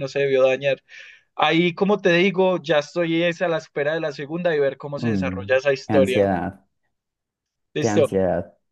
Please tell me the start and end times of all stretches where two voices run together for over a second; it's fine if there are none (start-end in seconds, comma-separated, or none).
5.0-6.3